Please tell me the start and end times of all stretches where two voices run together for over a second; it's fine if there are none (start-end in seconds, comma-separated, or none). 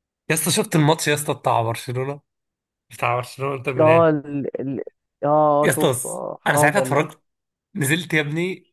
5.6-7.1